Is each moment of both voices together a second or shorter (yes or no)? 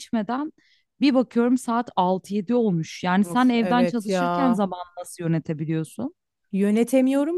no